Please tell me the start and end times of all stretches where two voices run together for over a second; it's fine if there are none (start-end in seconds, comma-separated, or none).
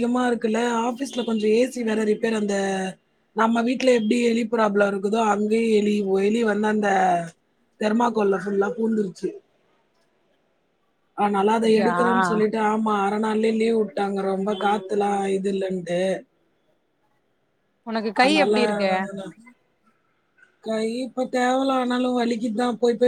none